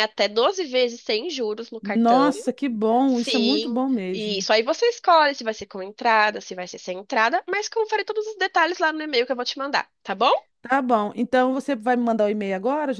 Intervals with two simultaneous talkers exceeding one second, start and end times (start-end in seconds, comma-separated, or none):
3.1-4.5